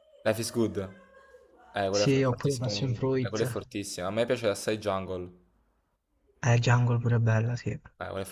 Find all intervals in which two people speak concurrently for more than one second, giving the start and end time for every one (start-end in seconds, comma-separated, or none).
1.9-3.6